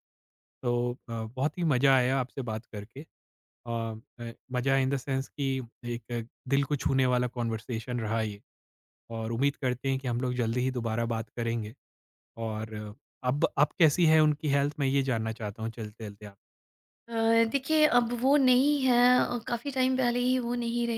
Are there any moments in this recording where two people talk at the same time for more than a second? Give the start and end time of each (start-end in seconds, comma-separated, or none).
none